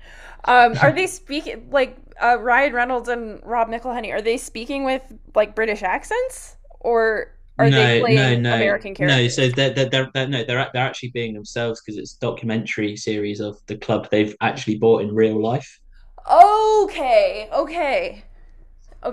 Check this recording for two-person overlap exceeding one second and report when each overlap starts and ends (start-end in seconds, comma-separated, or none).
7.6-9.4